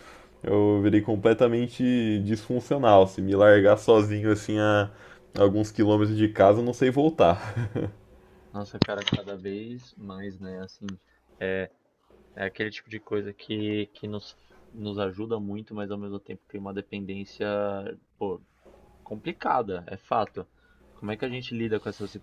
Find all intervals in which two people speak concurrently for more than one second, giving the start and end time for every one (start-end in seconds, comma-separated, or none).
none